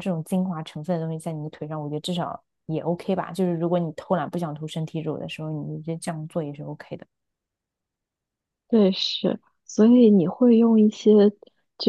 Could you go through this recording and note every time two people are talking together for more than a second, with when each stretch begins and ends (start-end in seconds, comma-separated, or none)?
none